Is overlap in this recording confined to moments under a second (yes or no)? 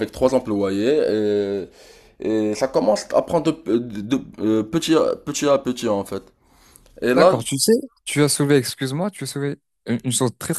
yes